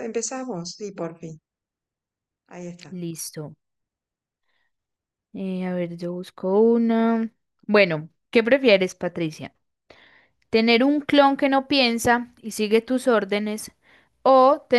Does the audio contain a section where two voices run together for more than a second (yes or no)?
no